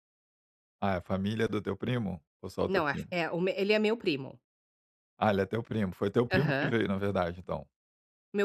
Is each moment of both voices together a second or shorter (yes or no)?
yes